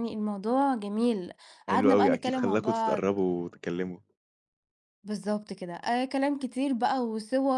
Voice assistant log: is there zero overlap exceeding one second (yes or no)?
no